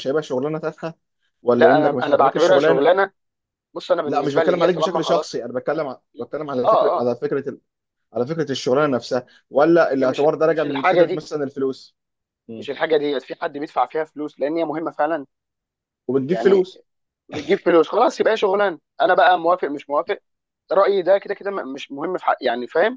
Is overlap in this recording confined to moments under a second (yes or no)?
no